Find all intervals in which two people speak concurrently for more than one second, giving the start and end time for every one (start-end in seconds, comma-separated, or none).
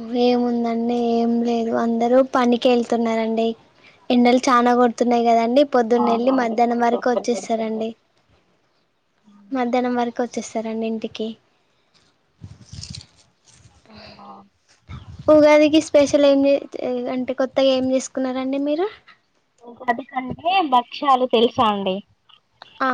6.0-7.8